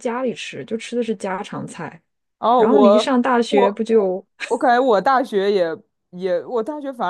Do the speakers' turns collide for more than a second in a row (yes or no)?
yes